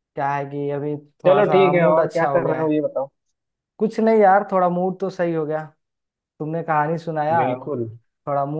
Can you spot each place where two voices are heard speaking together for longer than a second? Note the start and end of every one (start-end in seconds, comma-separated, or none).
1.2-2.7